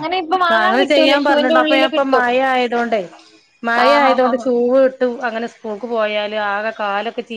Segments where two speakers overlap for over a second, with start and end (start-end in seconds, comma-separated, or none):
0.5-2.3